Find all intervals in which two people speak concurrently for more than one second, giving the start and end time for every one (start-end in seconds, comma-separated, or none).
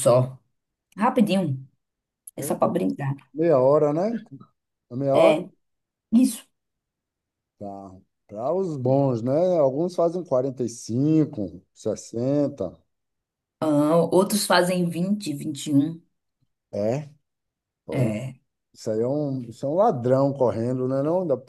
none